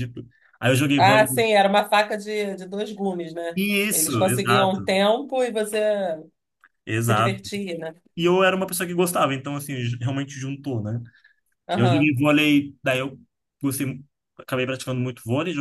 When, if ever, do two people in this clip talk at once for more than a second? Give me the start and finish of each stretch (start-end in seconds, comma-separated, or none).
3.5-4.9